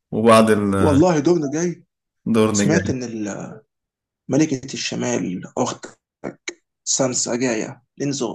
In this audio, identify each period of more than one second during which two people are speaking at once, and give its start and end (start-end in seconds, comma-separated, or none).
none